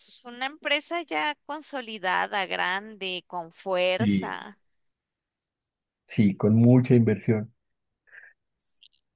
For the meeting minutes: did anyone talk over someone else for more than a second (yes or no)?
no